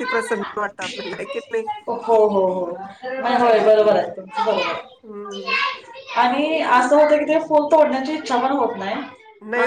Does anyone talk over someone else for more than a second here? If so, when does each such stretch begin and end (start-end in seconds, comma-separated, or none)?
none